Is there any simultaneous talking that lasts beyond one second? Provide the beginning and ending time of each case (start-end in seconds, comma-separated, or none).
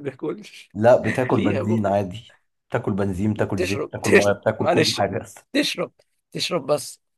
3.4-5.0